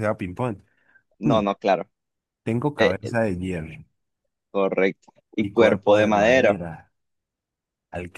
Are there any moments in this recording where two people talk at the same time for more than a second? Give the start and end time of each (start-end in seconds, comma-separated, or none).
5.4-6.6